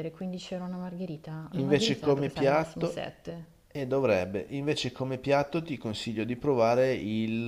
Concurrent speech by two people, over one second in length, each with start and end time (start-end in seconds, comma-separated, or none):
1.5-3.0